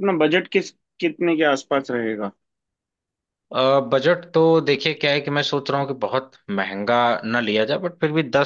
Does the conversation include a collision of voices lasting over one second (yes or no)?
no